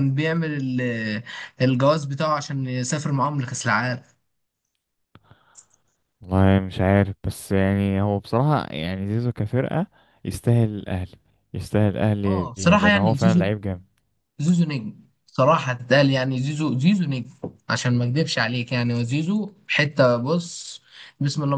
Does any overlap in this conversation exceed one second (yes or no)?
yes